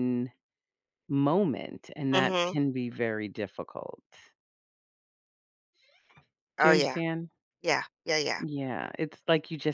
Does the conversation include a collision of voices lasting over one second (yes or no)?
no